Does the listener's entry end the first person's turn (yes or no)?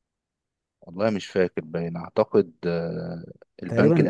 yes